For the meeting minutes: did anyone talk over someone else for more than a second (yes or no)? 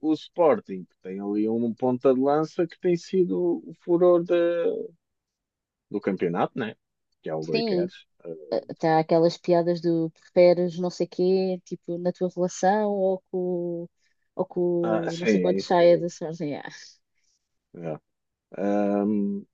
yes